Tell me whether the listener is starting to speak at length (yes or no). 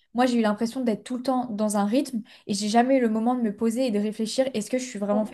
no